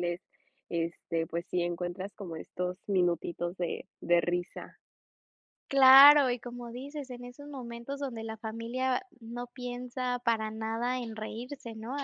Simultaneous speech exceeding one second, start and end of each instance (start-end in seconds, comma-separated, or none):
none